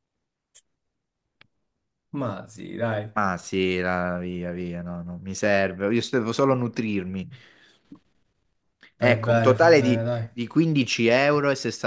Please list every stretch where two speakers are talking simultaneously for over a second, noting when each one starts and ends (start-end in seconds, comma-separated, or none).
9.0-10.3